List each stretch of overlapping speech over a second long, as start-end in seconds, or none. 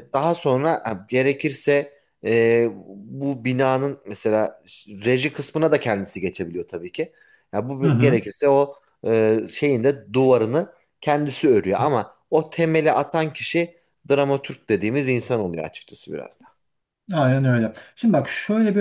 none